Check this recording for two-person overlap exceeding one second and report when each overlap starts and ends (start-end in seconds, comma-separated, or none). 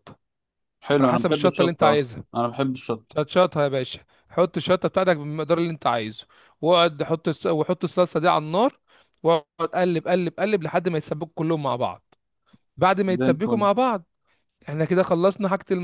1.0-2.2